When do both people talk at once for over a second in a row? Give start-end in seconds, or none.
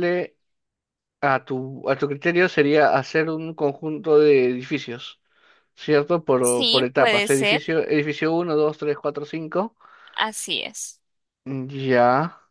6.4-7.7